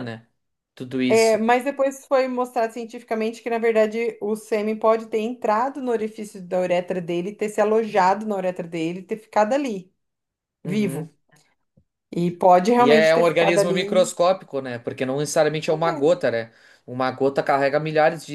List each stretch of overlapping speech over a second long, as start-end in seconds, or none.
12.8-14.1